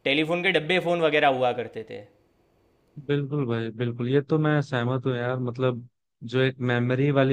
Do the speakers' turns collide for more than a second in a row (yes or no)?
no